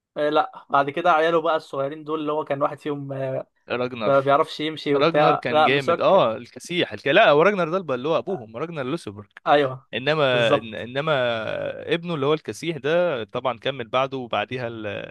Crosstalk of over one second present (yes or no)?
yes